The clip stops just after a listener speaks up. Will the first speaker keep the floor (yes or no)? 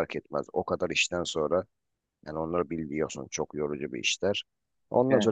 yes